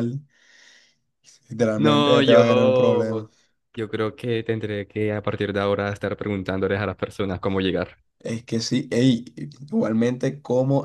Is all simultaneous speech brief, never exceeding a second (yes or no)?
no